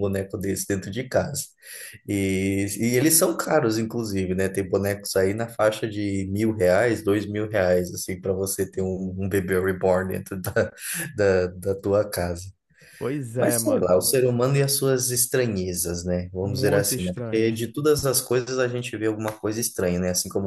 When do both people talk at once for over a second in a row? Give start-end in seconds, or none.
16.4-17.8